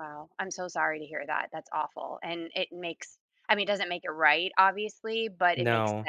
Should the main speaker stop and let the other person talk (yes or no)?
no